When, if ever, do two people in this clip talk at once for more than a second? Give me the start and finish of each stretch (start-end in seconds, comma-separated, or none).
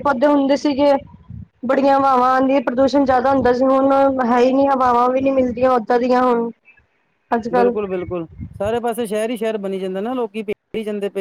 none